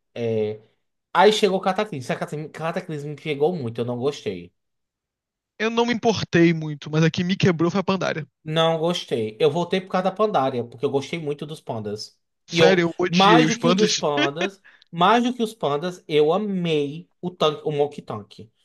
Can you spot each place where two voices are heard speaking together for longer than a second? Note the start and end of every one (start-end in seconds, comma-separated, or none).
12.5-14.0